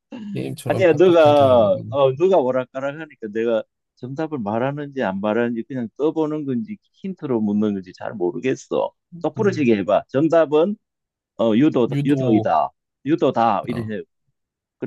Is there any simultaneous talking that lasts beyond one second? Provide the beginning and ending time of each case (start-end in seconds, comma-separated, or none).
0.7-2.0